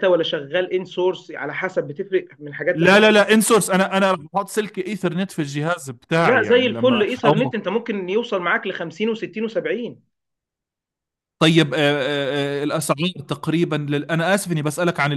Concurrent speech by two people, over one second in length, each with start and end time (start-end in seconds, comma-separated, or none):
6.2-7.5